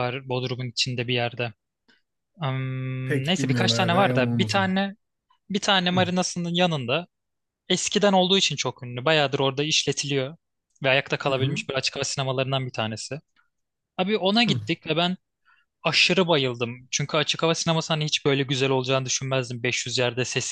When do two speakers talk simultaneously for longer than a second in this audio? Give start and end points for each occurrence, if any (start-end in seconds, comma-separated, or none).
3.0-4.7